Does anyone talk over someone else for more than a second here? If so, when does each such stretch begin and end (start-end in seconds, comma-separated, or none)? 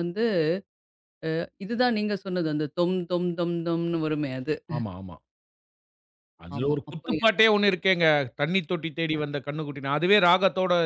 none